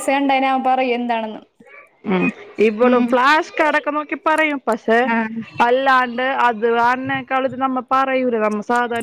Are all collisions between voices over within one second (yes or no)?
yes